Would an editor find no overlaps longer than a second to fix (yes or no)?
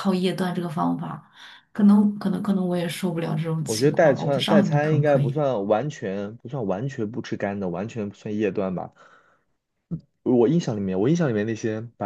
no